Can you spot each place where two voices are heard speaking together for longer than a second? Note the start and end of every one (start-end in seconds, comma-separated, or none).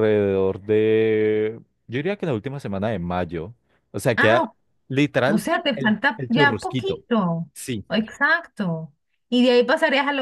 5.3-7.0